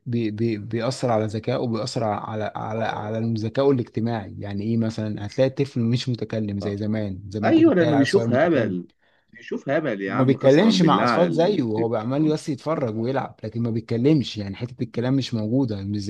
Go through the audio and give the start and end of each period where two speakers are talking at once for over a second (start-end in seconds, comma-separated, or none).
7.4-8.8, 10.1-12.4